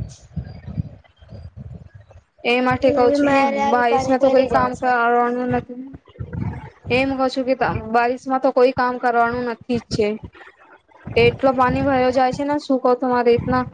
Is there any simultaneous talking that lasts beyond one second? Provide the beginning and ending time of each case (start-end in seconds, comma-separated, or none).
2.8-4.9